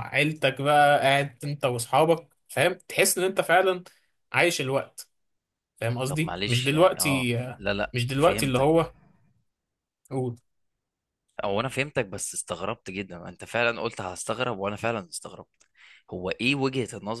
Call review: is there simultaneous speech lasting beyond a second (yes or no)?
yes